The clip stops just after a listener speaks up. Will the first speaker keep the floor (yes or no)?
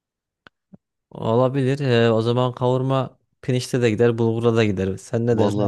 no